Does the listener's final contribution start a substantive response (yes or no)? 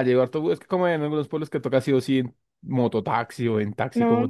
yes